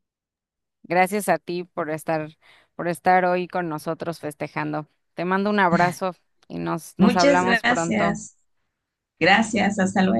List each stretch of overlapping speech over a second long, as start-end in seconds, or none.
7.0-8.2